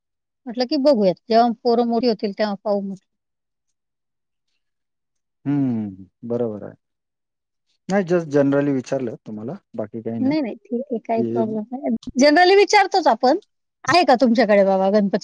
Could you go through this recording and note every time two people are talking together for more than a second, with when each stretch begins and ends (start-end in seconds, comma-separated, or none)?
none